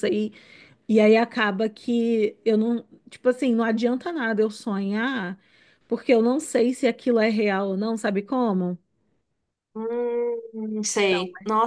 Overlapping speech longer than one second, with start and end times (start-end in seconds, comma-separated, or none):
none